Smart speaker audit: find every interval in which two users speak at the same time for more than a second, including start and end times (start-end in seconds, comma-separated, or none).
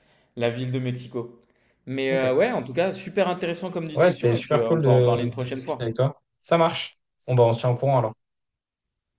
3.9-6.0